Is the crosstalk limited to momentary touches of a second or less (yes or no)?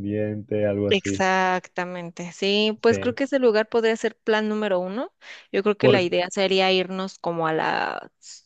yes